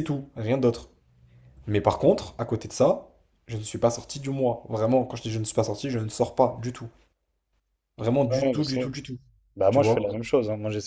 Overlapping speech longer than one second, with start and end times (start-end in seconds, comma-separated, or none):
none